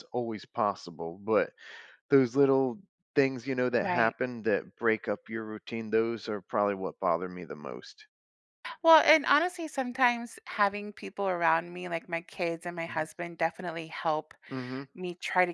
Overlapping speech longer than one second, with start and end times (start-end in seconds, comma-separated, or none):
none